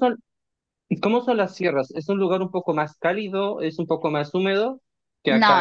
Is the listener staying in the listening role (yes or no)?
no